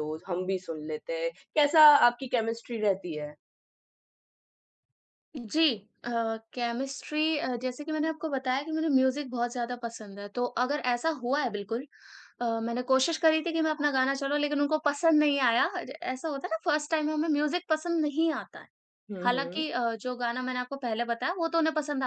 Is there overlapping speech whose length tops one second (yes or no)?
no